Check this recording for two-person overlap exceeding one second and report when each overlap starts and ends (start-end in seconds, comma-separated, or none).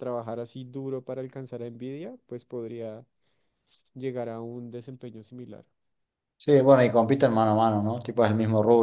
none